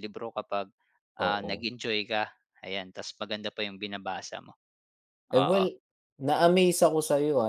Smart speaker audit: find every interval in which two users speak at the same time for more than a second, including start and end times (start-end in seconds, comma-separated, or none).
none